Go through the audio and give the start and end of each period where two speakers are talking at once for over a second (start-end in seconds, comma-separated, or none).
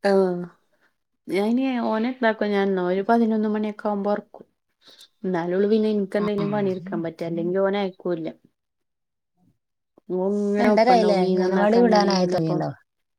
10.6-12.6